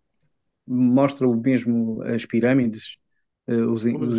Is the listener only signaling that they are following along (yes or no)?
yes